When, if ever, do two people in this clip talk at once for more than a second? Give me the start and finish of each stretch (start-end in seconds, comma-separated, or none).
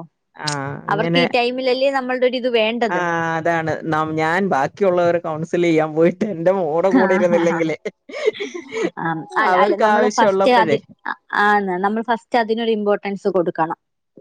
none